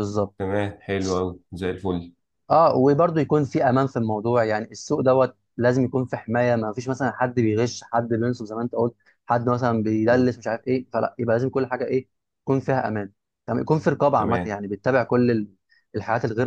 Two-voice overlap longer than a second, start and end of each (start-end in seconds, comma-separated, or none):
none